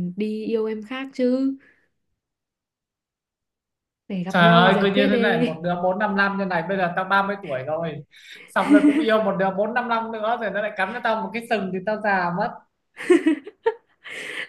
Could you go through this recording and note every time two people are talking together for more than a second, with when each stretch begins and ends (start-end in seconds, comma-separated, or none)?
4.3-5.6